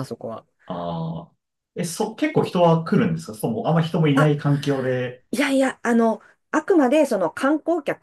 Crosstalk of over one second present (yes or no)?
no